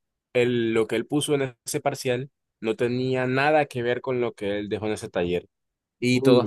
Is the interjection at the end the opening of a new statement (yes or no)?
no